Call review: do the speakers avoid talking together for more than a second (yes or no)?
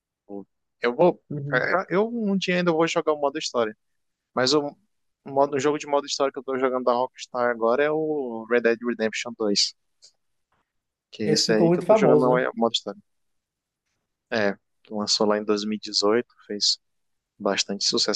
no